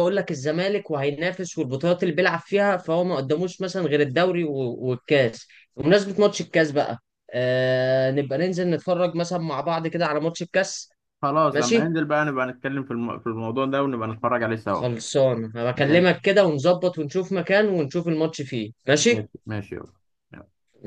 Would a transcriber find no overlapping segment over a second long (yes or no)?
yes